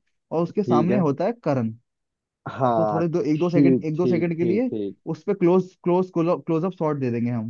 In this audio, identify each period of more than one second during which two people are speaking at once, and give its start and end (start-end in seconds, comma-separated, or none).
2.8-4.7